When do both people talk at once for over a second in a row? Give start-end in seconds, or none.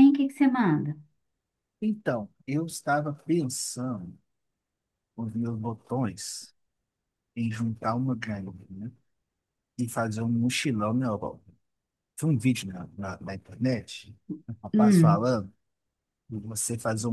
none